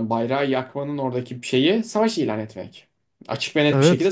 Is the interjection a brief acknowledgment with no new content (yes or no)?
yes